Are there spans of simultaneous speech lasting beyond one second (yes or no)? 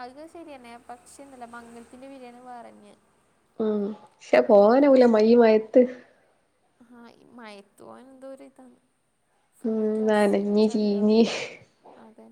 yes